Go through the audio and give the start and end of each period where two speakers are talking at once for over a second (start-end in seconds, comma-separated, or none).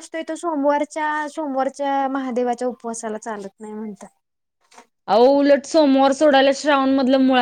none